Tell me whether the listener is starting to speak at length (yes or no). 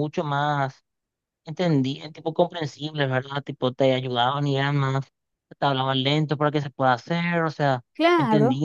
no